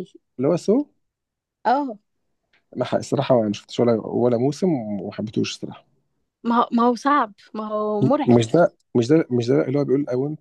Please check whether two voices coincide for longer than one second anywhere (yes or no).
no